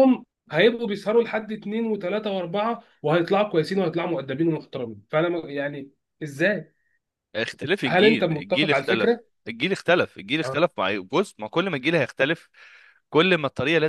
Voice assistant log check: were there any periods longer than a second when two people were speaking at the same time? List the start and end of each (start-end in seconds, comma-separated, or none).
7.9-9.2